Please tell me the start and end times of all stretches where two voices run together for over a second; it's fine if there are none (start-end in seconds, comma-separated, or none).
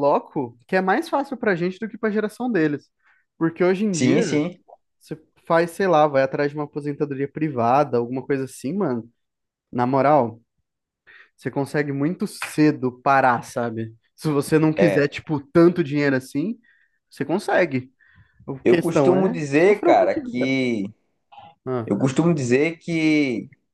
18.6-20.6